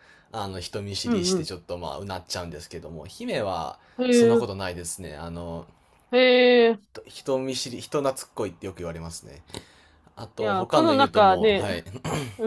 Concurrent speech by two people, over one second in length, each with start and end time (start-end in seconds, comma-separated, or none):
10.4-11.7